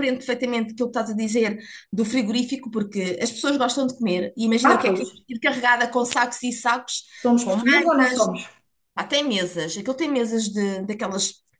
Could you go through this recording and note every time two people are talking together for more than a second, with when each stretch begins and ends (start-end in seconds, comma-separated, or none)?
none